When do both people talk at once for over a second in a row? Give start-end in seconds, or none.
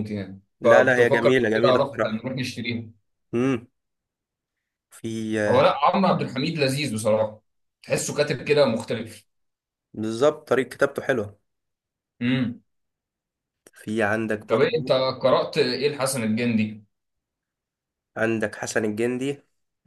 0.6-2.2